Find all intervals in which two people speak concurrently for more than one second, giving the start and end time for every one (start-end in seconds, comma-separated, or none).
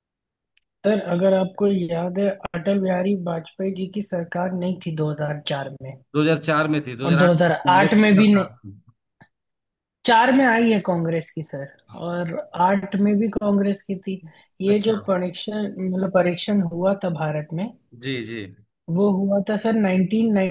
7.0-8.5